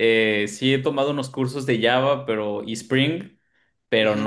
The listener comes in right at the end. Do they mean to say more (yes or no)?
no